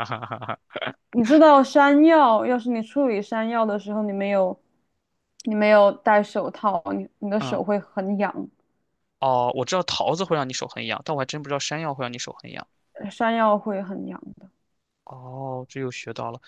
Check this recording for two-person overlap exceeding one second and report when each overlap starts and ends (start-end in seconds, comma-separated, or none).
none